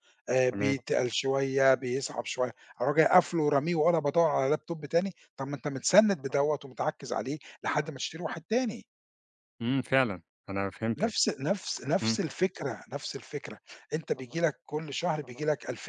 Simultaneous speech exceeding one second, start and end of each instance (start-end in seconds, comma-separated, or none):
none